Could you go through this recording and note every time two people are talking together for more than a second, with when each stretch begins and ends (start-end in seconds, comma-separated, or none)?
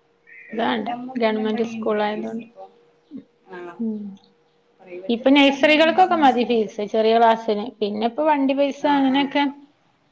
5.1-6.8